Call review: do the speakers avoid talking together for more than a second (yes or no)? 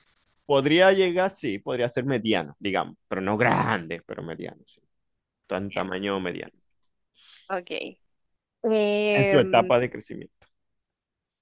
yes